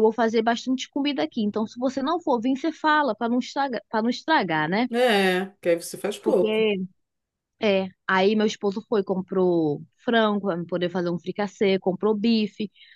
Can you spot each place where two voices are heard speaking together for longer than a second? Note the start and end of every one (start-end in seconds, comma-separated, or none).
none